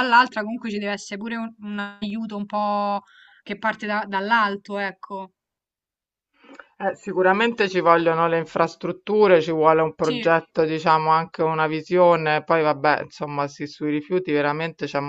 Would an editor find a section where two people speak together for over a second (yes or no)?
no